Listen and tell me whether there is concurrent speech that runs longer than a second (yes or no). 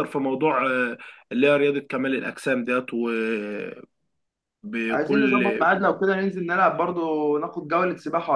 no